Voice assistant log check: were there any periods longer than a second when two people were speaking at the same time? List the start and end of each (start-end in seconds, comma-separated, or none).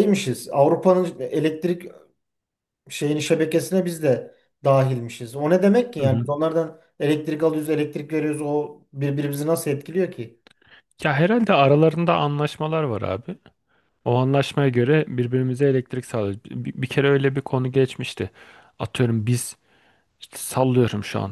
none